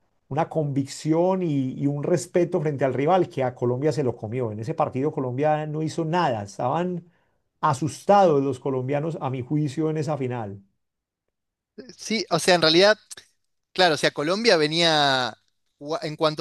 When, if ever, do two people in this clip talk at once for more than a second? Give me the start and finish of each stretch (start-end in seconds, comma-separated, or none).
none